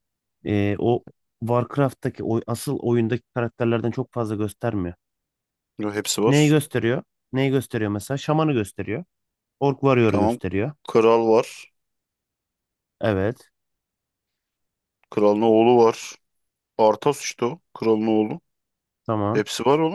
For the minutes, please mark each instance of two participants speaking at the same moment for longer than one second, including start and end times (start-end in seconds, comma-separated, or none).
none